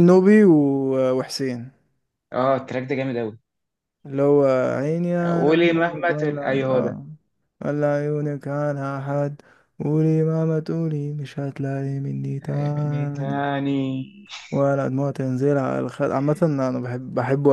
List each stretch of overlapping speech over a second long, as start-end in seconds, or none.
5.3-7.0